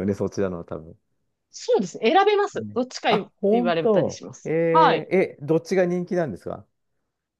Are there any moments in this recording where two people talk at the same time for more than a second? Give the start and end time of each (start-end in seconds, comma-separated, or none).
2.5-5.1